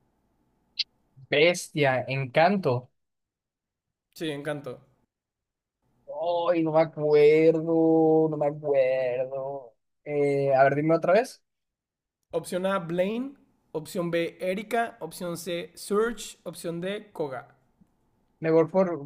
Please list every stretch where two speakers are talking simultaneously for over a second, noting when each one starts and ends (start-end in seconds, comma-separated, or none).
none